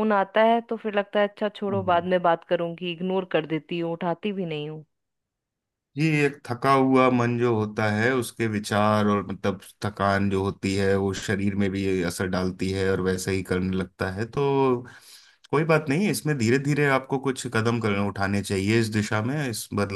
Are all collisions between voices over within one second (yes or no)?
yes